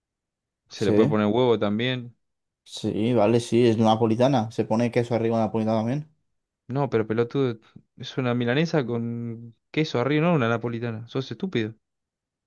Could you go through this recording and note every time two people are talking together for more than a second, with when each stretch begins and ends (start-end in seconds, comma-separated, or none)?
none